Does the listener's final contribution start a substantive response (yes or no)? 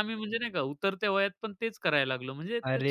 yes